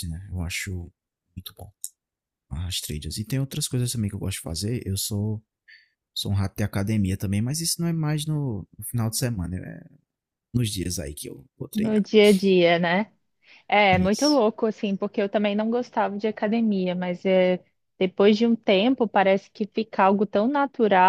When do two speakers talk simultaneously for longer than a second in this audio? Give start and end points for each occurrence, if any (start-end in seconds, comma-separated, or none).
none